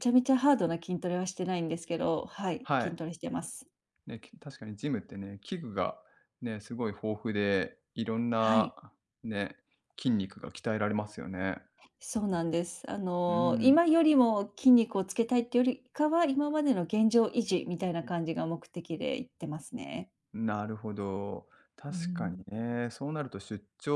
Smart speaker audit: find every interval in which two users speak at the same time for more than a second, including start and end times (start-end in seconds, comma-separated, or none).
none